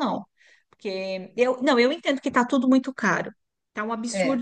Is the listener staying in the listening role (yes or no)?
yes